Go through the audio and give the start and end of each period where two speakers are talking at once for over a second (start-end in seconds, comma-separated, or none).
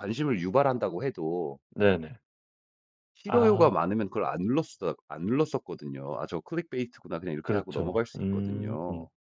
7.4-8.8